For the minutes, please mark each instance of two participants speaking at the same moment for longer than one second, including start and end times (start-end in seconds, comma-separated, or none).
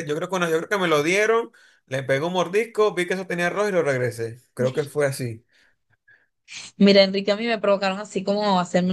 none